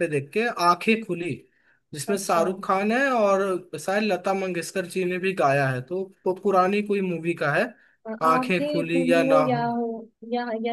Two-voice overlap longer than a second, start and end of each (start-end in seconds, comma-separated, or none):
8.3-9.7